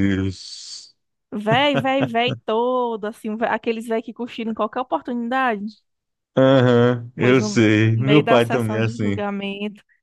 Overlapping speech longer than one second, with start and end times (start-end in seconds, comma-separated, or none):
7.2-9.2